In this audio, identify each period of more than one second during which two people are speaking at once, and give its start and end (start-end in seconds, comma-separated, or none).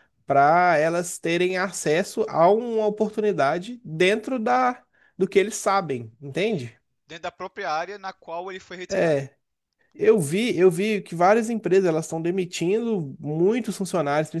none